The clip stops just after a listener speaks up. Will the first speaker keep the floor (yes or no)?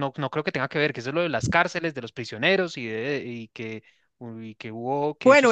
no